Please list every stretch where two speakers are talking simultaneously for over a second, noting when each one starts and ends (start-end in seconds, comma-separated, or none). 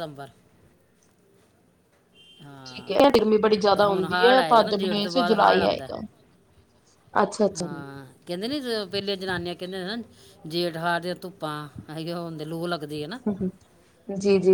3.8-5.9